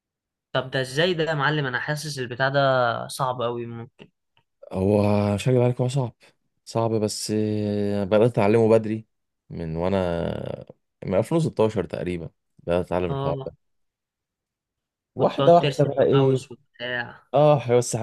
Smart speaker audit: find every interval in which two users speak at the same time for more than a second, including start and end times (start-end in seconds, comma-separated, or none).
15.2-16.4